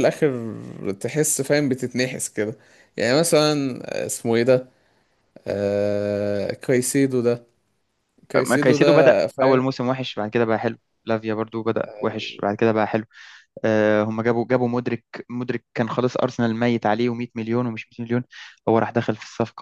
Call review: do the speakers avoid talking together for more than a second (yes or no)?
no